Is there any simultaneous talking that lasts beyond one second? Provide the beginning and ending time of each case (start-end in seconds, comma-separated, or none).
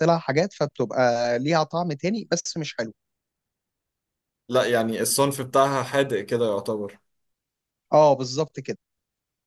none